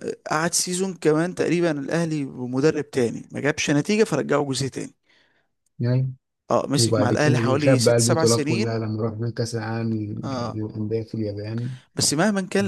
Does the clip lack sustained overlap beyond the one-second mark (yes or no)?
no